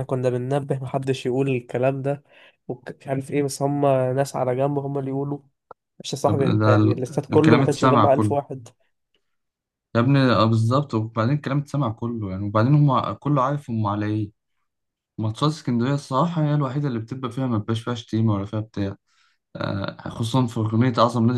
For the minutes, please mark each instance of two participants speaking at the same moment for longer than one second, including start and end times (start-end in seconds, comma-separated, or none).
6.2-8.3